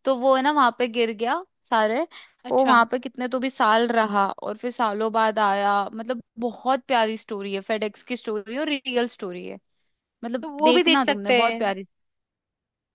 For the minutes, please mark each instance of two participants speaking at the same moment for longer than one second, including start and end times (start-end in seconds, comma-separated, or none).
10.4-11.8